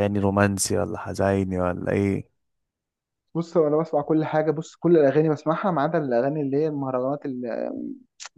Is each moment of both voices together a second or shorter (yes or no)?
yes